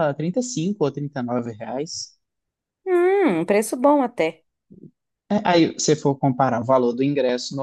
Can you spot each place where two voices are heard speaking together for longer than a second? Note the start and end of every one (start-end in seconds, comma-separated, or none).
none